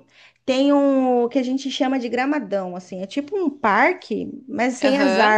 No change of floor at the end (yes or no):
yes